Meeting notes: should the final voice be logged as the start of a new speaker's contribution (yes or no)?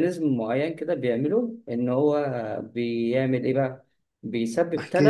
no